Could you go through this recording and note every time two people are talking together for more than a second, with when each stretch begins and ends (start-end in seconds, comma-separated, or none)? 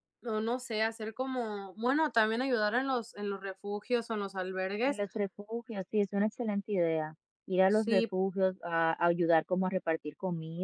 none